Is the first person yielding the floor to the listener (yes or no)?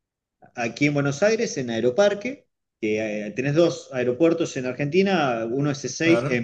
no